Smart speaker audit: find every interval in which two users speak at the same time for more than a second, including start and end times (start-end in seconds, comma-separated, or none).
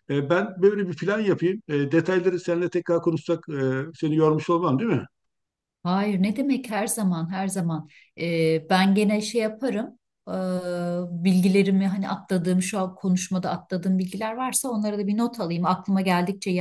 none